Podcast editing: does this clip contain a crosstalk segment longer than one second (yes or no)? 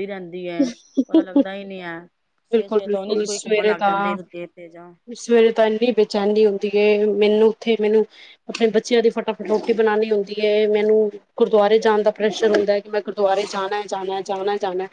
yes